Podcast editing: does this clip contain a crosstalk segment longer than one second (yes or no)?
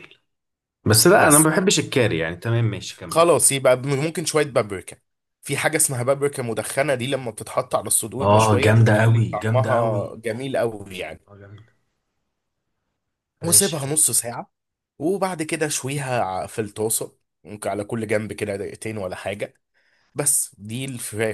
yes